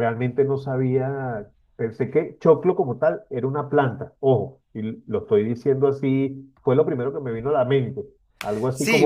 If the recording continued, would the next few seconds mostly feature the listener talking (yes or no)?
yes